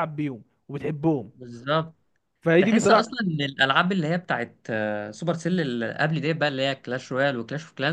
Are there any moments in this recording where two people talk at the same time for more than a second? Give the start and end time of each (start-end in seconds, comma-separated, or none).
none